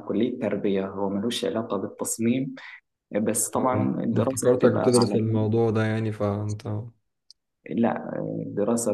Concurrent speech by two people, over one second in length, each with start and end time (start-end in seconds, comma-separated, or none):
3.5-5.2